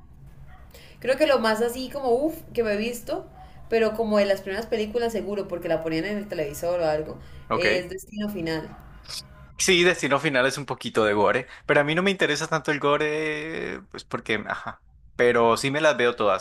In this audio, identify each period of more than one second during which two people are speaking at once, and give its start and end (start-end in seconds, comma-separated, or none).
none